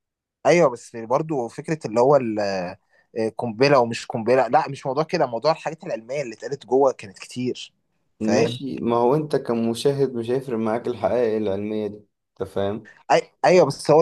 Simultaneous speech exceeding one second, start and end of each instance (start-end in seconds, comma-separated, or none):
none